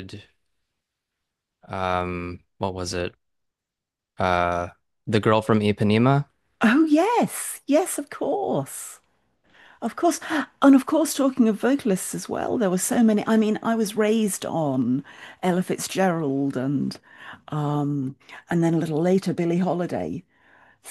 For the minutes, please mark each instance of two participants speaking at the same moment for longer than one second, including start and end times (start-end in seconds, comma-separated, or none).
none